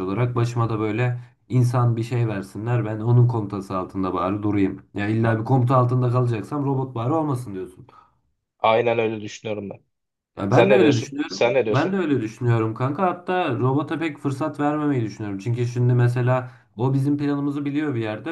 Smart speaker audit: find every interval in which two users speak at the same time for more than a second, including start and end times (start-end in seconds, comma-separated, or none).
10.5-12.1